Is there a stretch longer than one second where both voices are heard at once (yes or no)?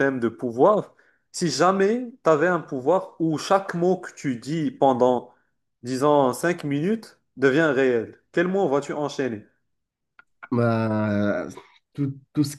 no